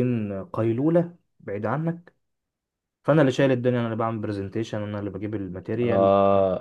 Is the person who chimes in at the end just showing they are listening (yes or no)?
no